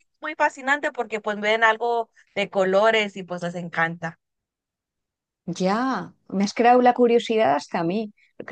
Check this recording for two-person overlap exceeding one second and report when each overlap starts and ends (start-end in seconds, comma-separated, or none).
none